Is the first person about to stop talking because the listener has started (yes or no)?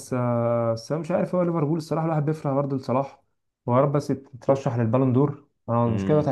yes